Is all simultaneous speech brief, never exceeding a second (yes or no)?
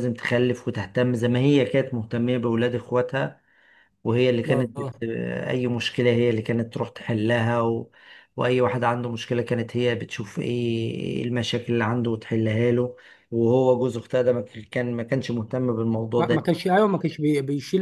yes